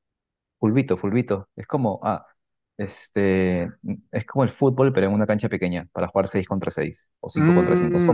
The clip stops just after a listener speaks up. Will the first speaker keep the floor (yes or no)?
no